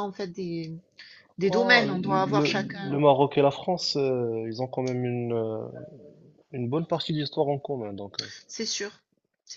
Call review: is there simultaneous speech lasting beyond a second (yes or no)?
yes